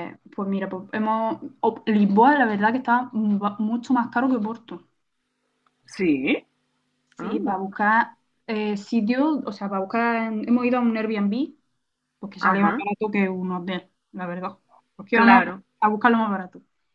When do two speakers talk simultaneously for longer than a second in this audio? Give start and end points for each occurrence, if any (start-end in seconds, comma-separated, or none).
none